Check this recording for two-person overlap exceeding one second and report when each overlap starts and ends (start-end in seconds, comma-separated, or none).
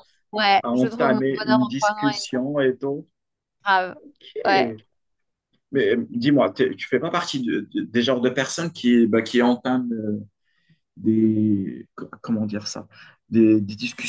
0.6-2.4